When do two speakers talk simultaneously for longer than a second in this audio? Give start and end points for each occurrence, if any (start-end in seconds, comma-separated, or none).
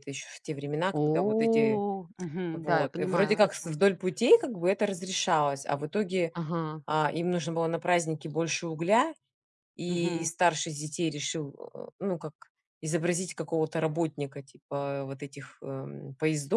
2.5-3.8